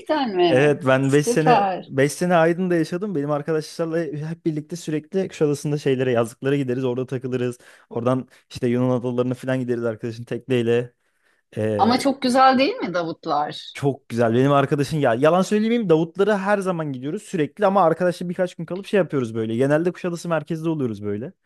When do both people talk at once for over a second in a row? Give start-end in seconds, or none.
0.5-1.9